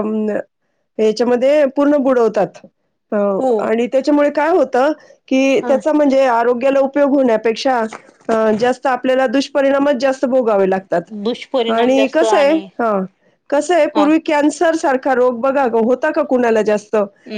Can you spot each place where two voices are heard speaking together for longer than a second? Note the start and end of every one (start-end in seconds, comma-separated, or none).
11.2-12.5